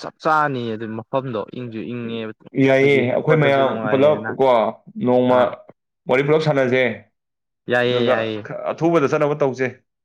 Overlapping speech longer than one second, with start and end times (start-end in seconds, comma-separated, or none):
2.7-4.3